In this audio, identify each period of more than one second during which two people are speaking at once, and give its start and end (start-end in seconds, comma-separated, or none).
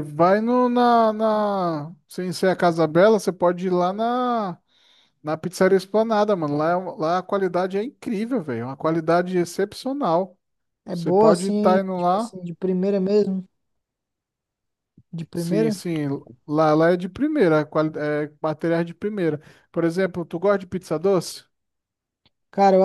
10.9-12.3